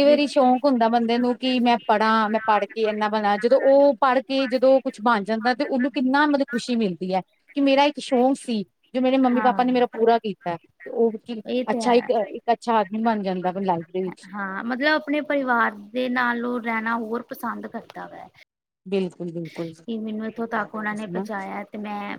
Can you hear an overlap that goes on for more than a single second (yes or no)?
no